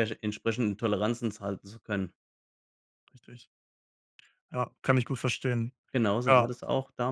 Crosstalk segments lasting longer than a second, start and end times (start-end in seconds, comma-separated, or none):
none